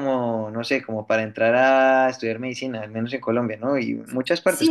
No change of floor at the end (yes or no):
no